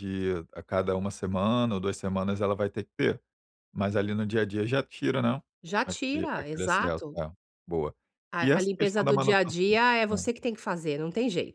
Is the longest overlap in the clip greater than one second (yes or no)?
yes